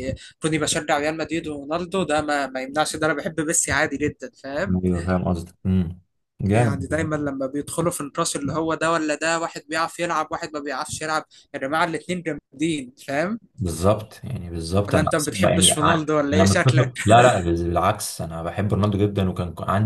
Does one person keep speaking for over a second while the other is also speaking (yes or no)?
yes